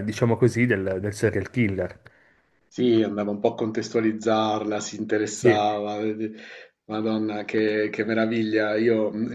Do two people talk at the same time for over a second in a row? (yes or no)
no